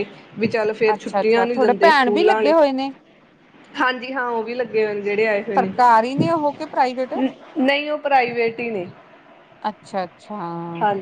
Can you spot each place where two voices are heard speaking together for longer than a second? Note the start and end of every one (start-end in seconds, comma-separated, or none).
0.9-2.5